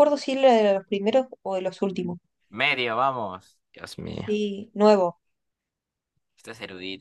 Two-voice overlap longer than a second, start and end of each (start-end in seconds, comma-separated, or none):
none